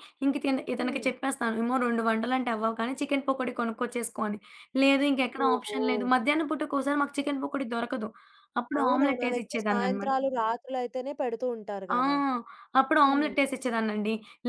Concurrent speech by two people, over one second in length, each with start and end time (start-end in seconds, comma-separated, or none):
8.8-10.1